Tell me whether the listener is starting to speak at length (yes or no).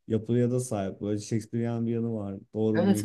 yes